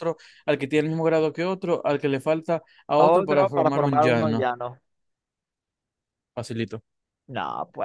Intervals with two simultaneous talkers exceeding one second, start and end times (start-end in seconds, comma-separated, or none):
3.0-4.5